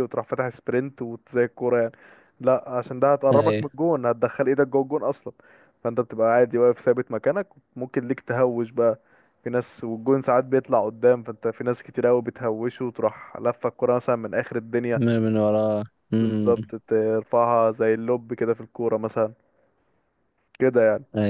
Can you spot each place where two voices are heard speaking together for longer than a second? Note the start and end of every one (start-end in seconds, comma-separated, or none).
none